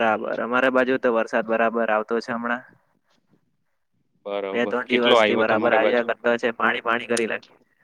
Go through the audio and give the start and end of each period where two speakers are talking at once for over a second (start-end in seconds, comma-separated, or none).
4.5-6.1